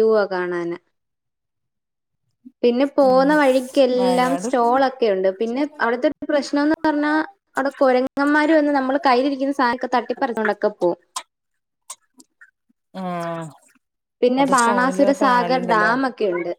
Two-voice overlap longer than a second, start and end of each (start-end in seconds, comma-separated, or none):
14.4-15.9